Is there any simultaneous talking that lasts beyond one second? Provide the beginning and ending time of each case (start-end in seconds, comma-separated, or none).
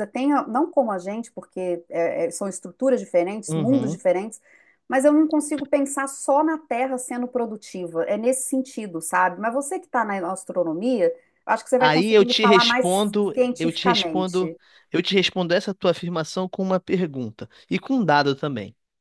11.8-14.6